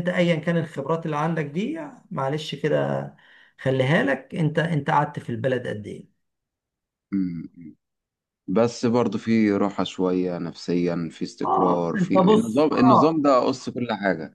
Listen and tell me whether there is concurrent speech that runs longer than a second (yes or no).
yes